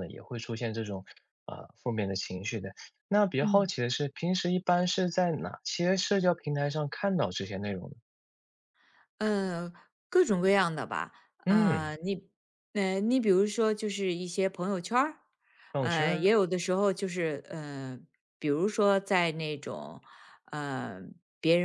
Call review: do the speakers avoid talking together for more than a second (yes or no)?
yes